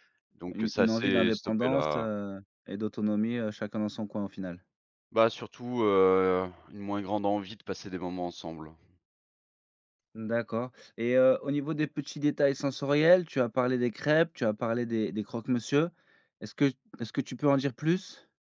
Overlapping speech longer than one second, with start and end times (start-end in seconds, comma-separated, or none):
0.5-2.1